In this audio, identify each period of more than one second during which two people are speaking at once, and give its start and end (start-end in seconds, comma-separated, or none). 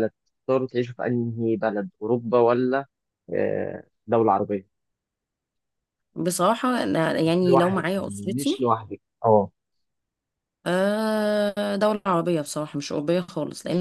7.2-8.6